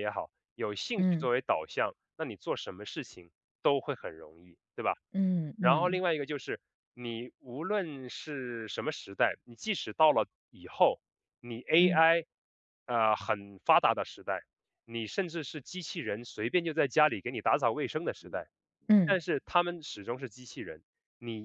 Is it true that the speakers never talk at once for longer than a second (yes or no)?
yes